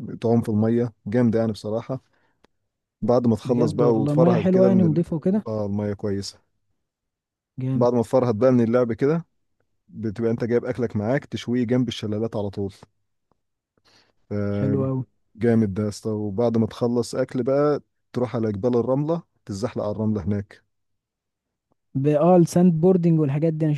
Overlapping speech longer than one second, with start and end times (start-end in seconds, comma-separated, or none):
3.4-5.0